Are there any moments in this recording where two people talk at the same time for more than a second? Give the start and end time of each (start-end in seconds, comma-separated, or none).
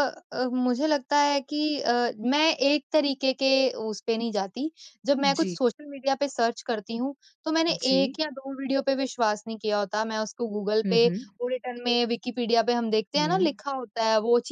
none